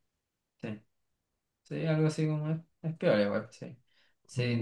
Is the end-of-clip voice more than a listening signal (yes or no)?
yes